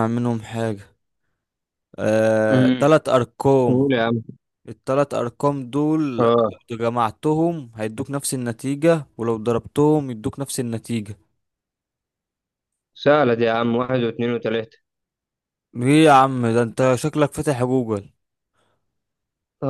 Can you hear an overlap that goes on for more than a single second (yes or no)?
no